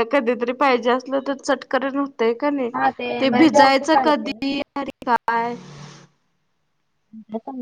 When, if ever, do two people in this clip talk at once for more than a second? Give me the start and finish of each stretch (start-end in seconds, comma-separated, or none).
3.2-4.5